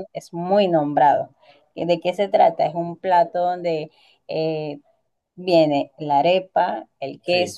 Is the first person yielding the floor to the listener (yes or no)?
no